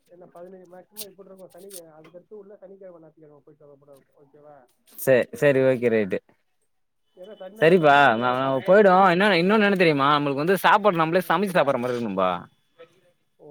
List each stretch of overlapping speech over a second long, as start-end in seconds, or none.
none